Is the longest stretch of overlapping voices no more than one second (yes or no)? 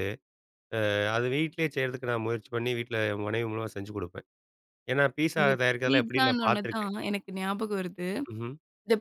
no